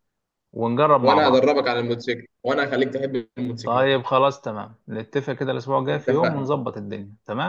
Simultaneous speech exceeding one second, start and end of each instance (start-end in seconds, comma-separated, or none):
none